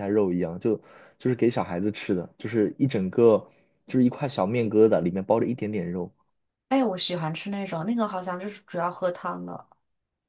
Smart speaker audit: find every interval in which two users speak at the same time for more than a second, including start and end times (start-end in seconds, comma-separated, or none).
none